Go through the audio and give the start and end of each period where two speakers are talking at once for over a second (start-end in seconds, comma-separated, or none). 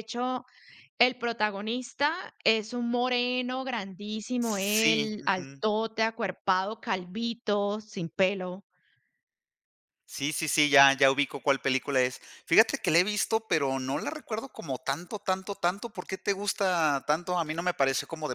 4.4-5.6